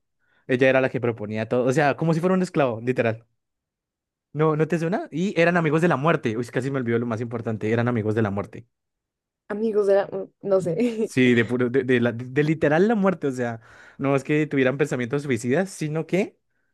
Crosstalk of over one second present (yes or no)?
no